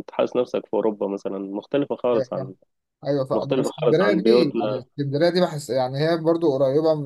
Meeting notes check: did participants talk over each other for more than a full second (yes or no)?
yes